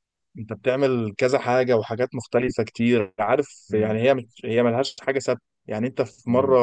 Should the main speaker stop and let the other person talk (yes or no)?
no